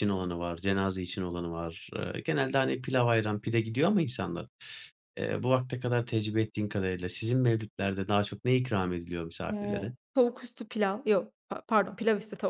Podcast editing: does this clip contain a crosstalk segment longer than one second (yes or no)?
no